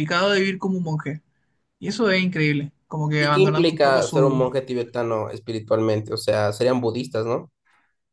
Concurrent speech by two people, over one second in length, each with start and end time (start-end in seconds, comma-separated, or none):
3.2-4.5